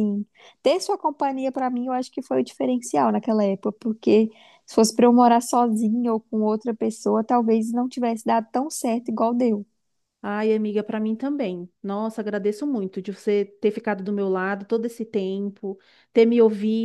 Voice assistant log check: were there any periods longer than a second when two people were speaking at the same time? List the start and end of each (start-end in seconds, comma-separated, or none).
none